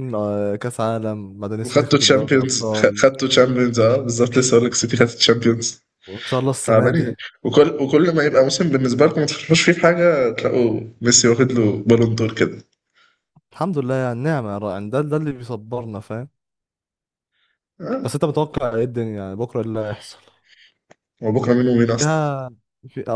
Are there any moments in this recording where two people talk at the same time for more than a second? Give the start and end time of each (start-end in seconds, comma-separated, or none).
1.6-3.1